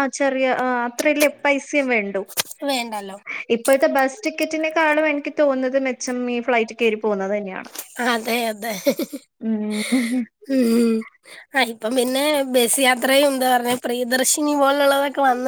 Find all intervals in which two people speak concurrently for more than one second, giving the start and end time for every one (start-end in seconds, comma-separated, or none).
none